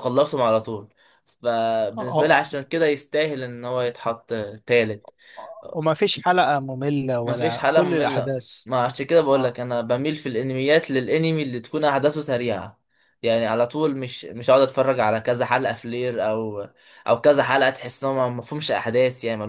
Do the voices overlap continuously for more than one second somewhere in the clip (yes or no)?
yes